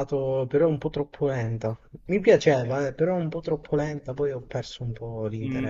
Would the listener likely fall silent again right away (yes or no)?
no